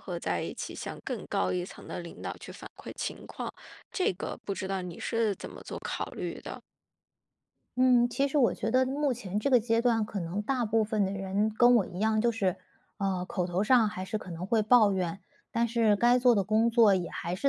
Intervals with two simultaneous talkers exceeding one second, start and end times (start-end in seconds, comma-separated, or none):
none